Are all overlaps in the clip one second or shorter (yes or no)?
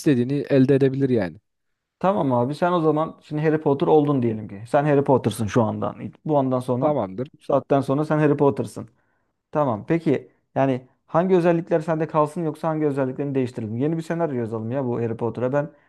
yes